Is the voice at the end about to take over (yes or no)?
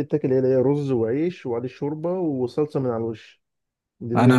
yes